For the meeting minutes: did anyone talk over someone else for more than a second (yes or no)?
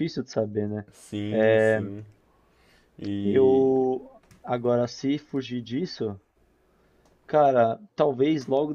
no